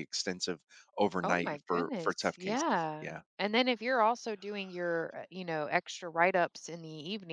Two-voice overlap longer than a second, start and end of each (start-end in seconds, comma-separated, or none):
1.2-3.2